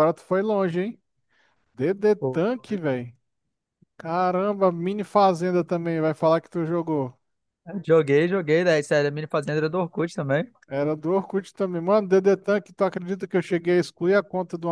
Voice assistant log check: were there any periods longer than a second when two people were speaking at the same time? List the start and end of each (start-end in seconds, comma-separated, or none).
none